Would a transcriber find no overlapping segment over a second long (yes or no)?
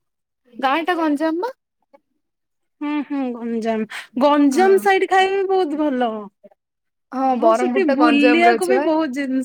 no